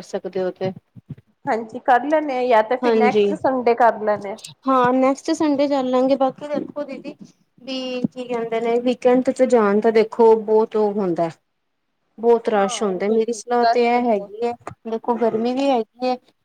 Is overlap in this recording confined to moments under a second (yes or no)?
no